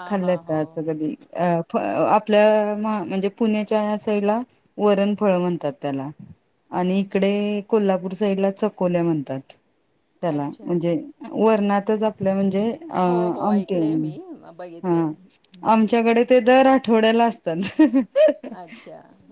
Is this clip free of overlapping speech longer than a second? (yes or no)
yes